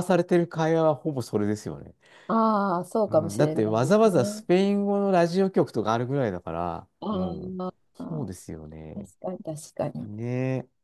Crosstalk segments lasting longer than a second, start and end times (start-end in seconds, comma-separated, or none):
3.1-4.5